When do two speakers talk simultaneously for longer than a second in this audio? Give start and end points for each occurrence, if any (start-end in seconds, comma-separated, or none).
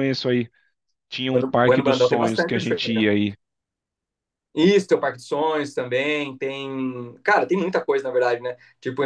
1.3-3.1